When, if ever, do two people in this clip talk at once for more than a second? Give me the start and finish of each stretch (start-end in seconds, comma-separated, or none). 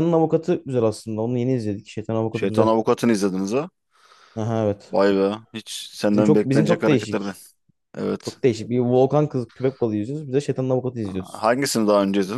6.1-7.3